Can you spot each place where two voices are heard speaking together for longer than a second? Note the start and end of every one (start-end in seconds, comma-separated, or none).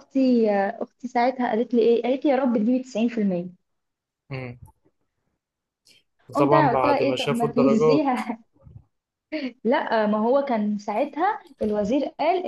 6.4-8.1